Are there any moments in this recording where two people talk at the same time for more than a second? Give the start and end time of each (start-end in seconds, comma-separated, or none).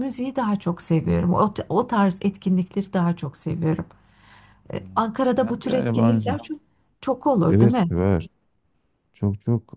4.9-6.4